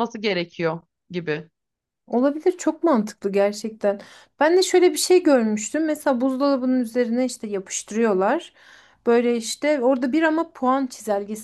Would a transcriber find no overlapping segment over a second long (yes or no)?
yes